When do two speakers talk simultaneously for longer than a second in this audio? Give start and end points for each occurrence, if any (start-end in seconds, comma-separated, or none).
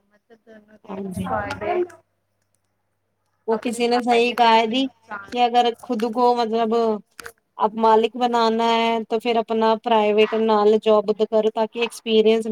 3.6-5.3